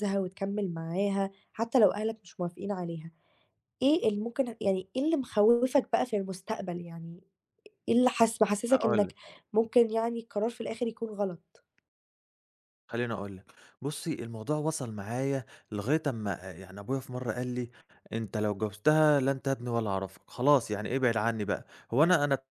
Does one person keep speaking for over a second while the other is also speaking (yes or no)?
no